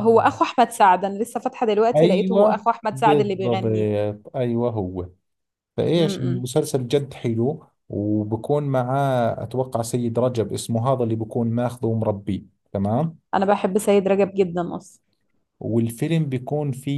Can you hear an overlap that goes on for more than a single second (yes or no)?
yes